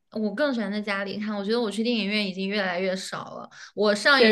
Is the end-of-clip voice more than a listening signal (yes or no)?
no